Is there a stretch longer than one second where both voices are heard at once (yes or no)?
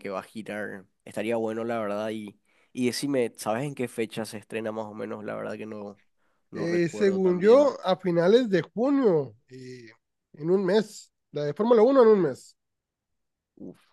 yes